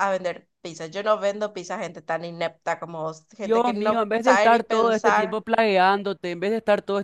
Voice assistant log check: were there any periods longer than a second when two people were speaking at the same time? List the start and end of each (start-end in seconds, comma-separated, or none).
3.4-5.4